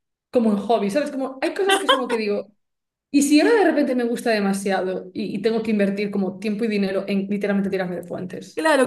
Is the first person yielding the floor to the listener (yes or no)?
yes